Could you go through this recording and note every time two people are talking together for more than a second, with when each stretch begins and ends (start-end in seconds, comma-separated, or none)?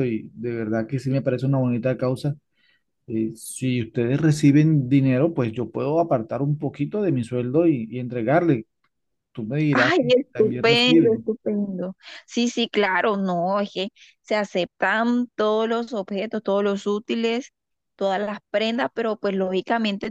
9.7-11.3